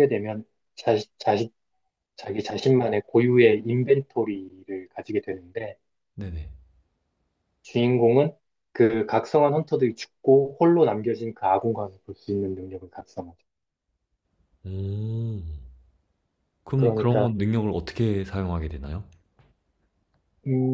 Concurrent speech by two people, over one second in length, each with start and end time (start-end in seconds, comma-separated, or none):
none